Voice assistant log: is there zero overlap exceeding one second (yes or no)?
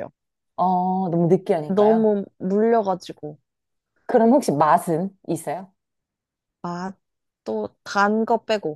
yes